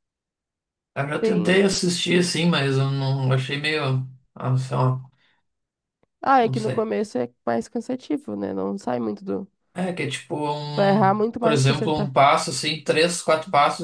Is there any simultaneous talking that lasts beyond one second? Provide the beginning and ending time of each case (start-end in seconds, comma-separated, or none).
10.7-12.1